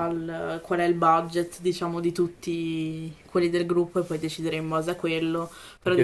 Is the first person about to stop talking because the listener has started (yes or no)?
yes